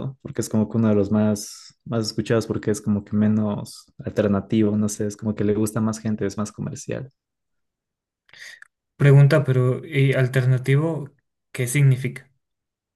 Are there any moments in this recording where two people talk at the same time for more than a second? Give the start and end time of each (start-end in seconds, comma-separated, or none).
none